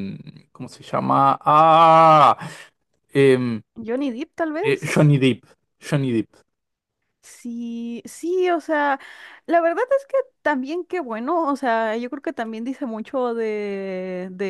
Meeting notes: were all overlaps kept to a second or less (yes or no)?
yes